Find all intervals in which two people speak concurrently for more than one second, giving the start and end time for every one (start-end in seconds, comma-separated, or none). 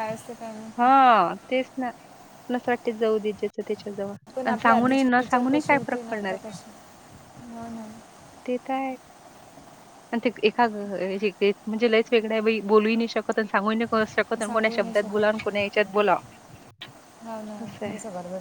4.4-6.6